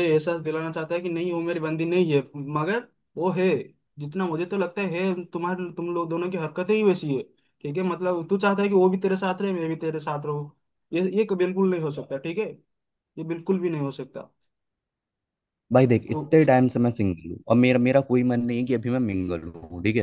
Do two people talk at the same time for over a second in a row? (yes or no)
no